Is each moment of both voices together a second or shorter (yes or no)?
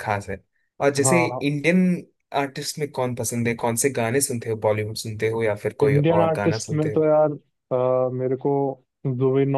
no